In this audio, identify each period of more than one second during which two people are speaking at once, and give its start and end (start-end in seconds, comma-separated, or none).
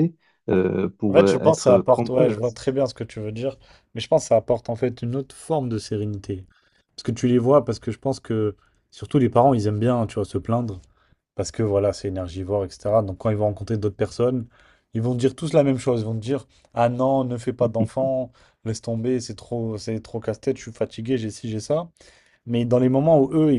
1.1-2.4